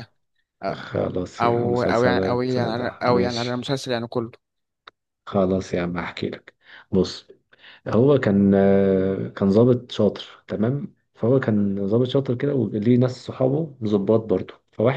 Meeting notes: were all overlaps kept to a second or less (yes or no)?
no